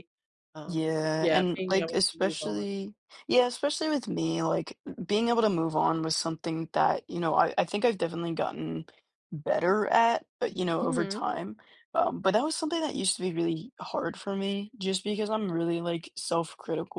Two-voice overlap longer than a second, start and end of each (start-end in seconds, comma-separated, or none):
0.7-2.6